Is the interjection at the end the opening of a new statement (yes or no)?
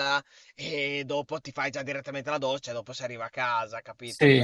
yes